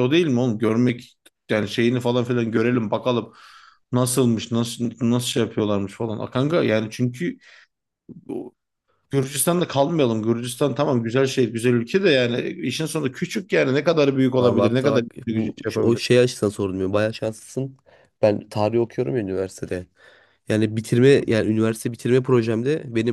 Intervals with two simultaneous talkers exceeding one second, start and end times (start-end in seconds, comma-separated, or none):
14.4-16.0